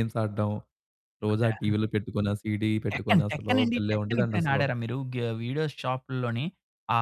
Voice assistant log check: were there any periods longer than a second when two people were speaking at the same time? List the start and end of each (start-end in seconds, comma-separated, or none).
2.9-4.6